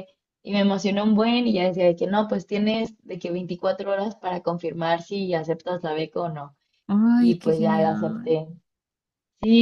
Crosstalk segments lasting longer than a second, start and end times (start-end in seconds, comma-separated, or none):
7.2-8.4